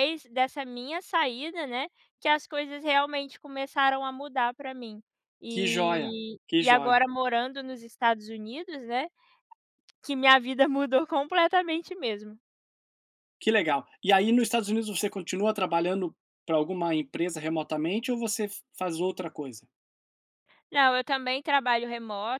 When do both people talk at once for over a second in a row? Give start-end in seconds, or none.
5.5-7.0